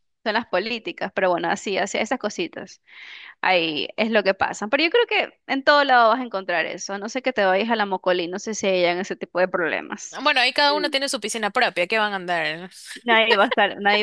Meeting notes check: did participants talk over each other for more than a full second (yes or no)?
no